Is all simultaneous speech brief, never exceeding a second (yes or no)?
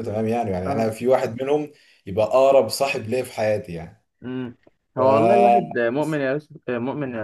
yes